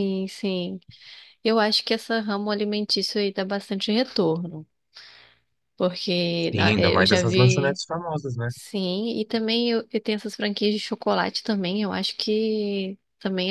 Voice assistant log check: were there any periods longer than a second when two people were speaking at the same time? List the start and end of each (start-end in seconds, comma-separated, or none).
6.5-7.8